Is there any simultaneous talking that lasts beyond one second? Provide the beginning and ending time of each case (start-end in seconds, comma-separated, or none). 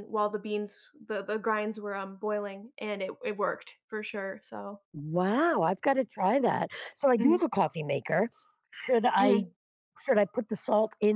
none